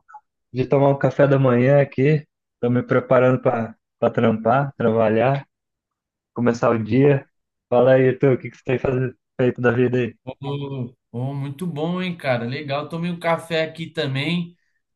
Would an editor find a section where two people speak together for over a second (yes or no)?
no